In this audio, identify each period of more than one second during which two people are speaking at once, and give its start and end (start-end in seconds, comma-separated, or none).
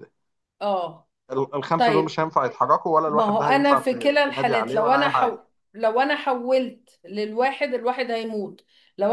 3.1-5.4